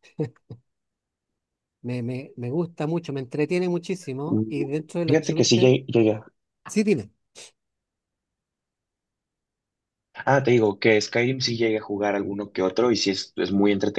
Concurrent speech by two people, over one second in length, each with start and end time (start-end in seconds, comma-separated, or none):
4.3-5.7